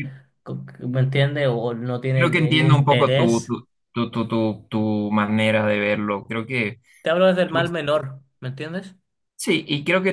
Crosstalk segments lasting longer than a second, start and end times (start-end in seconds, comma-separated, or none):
2.1-3.6